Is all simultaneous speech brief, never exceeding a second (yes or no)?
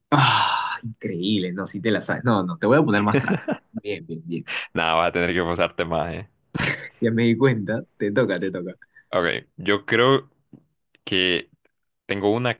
yes